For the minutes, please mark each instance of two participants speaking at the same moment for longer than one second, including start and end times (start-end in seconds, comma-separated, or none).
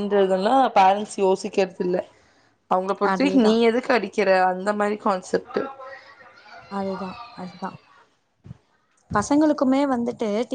none